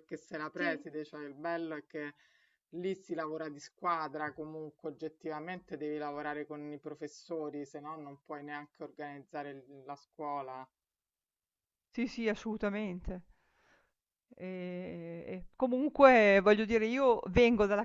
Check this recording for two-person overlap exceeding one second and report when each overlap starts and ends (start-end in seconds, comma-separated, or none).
none